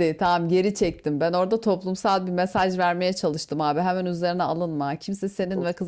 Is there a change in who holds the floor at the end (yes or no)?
no